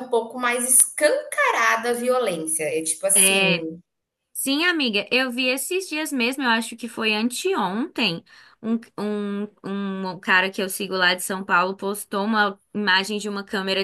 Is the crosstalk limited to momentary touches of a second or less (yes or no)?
yes